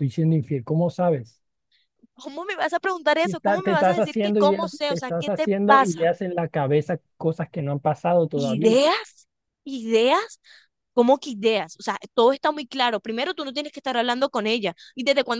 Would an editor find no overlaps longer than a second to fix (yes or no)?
no